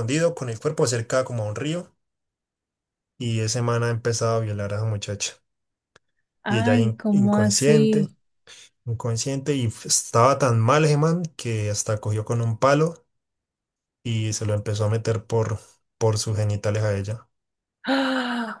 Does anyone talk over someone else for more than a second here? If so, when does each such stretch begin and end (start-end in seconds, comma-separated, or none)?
6.5-8.1